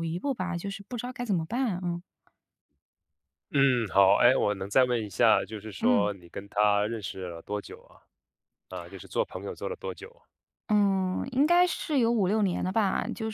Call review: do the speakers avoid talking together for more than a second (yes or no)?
yes